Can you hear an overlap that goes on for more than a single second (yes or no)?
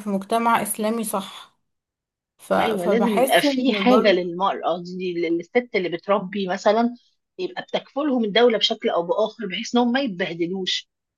yes